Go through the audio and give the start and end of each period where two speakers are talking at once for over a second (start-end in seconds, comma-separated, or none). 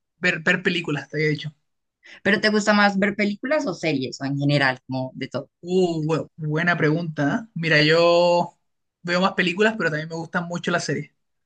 none